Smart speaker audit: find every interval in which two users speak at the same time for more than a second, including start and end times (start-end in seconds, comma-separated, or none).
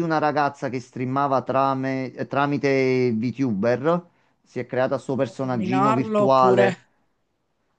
5.2-6.7